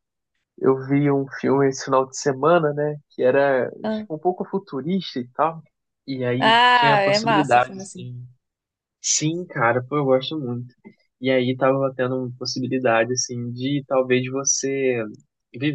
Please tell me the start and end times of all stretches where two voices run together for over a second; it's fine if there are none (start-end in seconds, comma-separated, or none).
6.4-8.1